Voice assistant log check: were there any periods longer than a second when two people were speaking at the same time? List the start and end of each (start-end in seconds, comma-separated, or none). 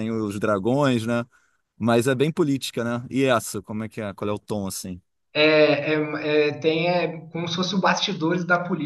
none